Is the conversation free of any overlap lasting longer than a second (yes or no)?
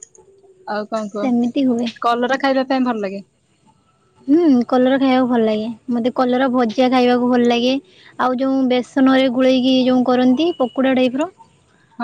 yes